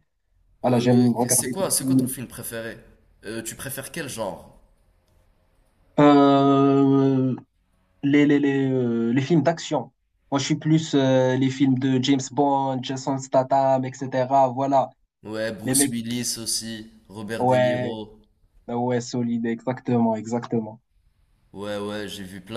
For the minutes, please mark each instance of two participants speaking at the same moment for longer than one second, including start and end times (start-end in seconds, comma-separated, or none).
0.7-2.1